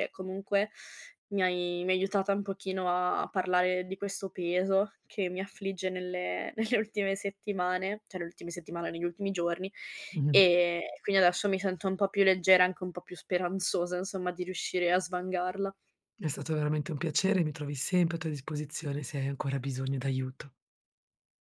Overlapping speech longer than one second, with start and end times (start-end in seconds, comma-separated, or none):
none